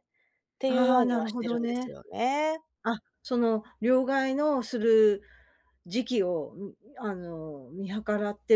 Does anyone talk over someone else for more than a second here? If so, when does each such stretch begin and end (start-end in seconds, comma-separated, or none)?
0.7-2.0